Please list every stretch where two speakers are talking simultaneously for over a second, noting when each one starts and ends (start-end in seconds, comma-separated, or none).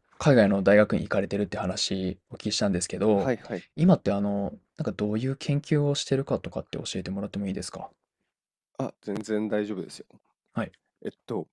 none